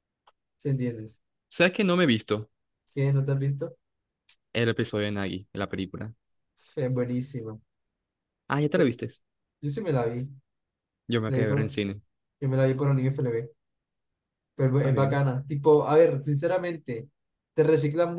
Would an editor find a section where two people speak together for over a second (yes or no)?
no